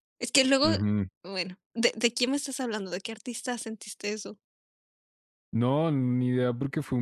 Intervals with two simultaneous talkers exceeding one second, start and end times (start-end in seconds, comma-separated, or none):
none